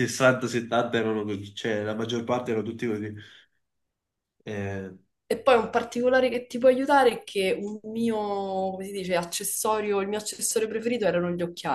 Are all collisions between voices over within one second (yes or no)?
yes